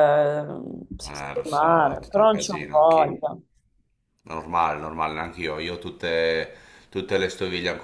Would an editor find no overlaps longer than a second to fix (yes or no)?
no